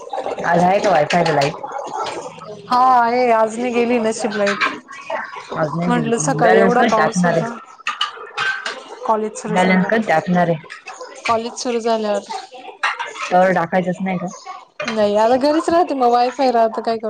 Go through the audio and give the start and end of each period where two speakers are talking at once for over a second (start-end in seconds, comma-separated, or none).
5.9-7.5